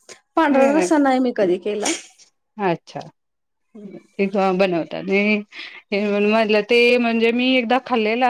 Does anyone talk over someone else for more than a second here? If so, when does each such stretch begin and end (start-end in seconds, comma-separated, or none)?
none